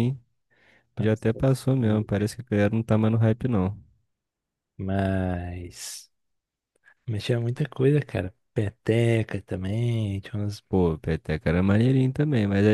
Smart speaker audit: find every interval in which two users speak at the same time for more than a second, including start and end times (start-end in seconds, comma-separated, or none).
1.0-2.3